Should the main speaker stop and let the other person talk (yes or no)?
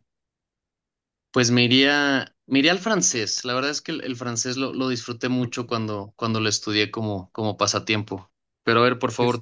no